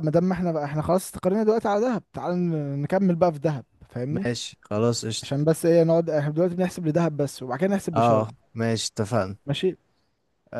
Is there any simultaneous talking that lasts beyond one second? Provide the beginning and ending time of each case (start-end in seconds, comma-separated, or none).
none